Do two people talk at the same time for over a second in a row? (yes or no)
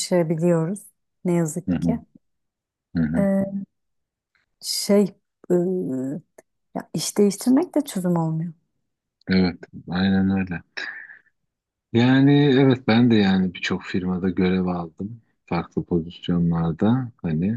no